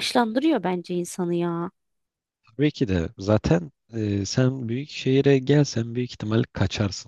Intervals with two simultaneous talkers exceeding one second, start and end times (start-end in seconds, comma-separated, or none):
none